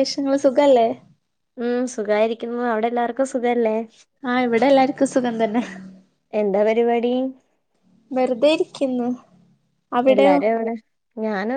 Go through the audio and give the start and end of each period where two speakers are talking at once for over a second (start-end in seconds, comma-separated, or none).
none